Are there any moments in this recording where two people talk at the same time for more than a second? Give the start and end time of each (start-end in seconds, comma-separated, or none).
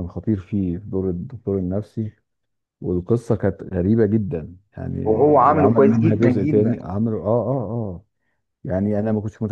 5.5-6.8